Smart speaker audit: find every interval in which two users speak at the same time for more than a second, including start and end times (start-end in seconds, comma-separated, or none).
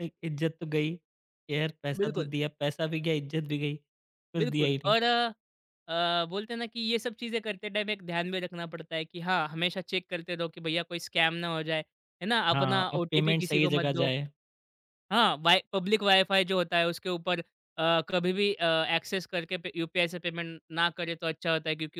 12.5-14.1